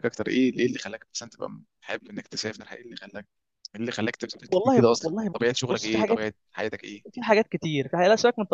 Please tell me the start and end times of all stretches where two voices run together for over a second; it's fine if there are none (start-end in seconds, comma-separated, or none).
4.5-6.2